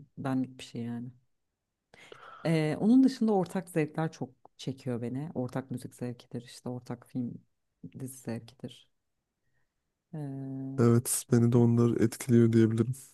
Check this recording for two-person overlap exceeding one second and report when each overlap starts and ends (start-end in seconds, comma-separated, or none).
none